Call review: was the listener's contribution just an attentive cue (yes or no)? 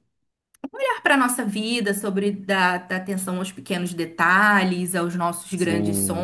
no